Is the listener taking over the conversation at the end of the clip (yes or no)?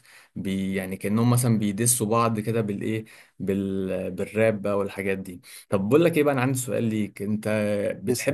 no